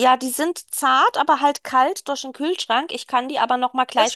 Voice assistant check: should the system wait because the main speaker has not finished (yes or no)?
yes